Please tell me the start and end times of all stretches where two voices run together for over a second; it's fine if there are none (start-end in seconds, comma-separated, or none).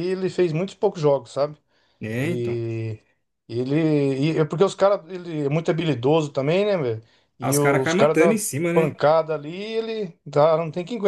7.4-9.0